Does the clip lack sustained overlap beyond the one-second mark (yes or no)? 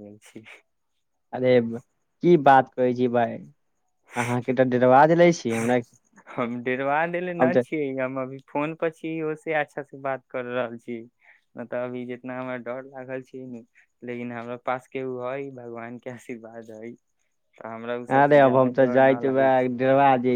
no